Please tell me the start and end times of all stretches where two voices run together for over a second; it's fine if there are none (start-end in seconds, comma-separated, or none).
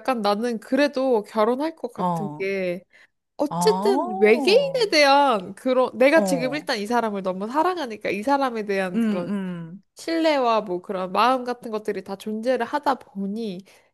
3.5-4.9